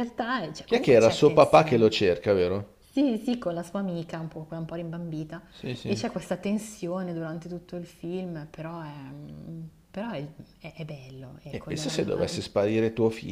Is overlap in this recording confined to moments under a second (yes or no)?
no